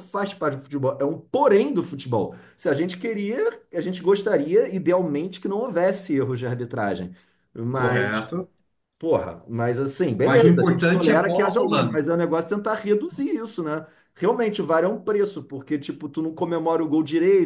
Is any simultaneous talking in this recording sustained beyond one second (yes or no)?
yes